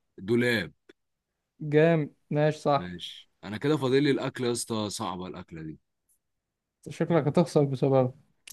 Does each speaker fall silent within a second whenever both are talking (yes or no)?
yes